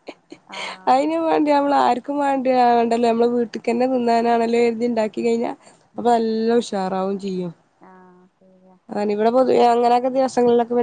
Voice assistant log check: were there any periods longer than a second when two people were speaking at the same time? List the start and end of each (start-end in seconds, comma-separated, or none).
none